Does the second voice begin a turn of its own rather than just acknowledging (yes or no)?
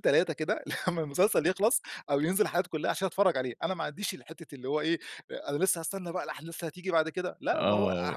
yes